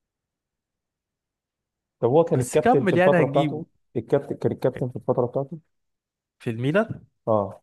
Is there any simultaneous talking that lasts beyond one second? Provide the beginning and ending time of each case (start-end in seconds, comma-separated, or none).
2.3-3.7